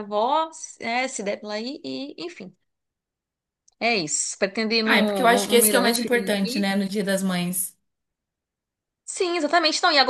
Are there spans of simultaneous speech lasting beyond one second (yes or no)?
yes